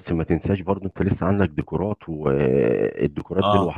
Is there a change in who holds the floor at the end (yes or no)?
no